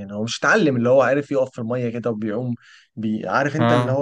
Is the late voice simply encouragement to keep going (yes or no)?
yes